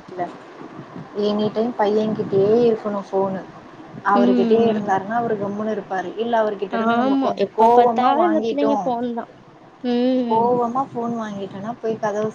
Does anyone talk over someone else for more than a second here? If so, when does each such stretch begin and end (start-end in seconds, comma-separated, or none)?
6.8-8.9